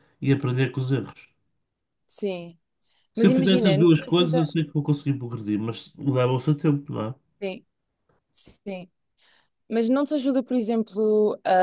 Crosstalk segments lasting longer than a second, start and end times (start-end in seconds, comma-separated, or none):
3.1-4.5